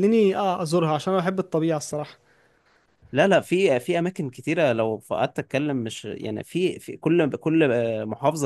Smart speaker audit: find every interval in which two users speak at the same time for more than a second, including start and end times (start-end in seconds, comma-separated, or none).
none